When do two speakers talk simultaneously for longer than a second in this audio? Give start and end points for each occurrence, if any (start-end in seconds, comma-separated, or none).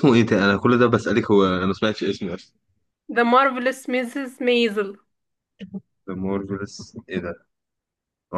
none